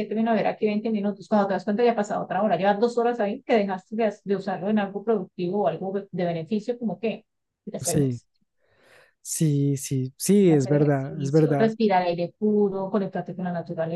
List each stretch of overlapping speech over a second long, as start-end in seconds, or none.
10.5-11.8